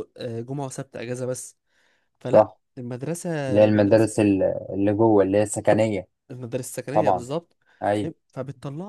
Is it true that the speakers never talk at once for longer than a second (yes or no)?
yes